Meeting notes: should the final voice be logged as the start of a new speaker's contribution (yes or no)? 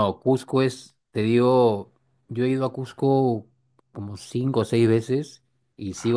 no